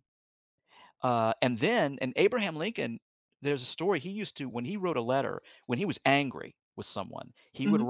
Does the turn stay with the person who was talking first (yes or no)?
yes